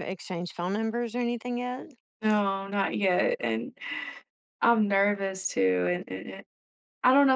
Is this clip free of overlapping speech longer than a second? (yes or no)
yes